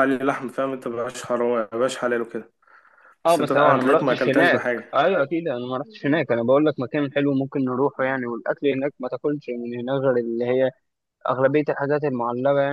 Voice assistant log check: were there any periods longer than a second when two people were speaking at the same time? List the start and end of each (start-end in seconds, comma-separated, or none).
3.3-5.0